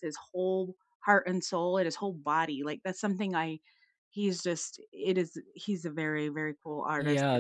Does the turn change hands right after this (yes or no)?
yes